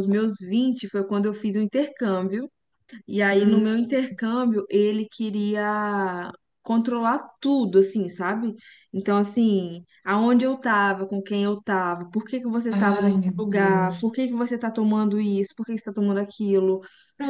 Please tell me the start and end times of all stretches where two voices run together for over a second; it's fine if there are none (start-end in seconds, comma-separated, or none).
12.7-14.2